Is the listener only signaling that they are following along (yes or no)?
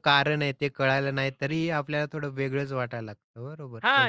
no